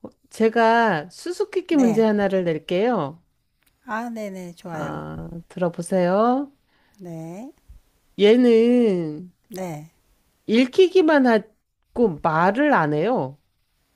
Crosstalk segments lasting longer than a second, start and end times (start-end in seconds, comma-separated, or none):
none